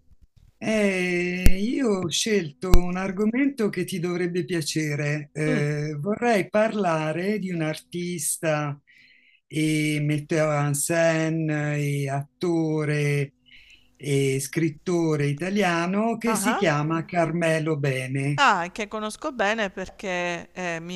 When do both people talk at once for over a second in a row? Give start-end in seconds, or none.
none